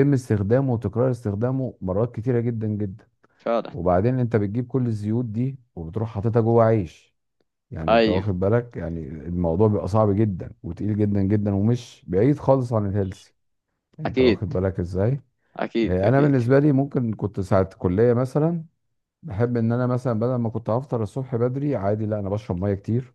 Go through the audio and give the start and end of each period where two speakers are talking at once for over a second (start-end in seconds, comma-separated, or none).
none